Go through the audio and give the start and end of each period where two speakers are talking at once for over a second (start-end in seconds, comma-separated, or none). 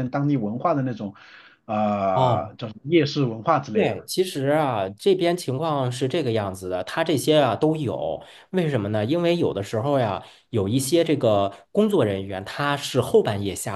none